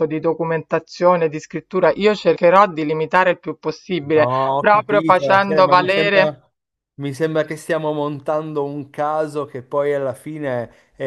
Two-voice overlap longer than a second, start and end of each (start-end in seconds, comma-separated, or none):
4.0-6.3